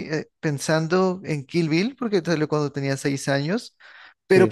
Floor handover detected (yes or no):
no